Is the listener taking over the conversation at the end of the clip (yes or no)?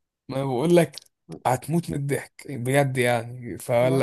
no